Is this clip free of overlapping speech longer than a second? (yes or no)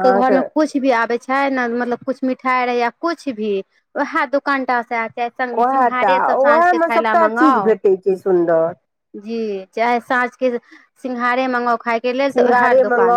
no